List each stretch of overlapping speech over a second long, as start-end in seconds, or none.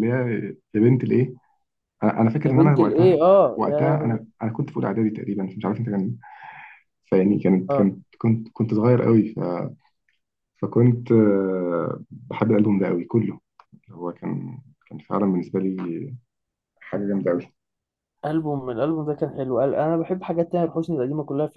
2.4-4.2